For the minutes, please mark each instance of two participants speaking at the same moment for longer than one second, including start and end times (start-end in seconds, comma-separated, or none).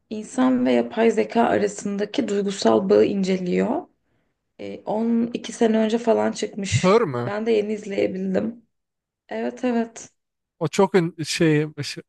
none